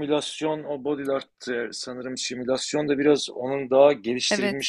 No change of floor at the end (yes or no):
yes